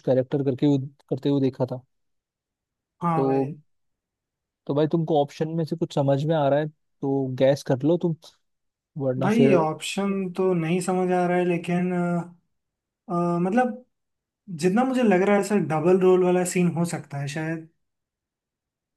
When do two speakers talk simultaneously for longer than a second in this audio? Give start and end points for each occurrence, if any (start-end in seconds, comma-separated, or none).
none